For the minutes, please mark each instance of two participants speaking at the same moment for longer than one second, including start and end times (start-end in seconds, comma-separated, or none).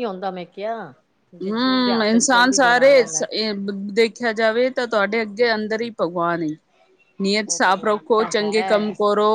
1.4-2.9